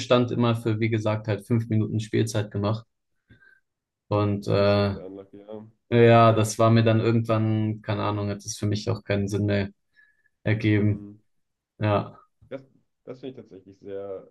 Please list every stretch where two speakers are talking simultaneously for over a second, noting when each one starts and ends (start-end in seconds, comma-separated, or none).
none